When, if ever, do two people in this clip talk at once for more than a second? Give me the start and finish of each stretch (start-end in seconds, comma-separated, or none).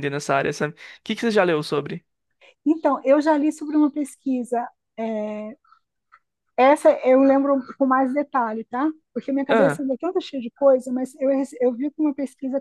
none